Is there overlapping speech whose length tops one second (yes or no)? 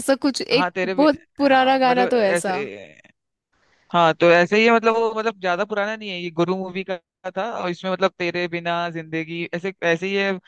yes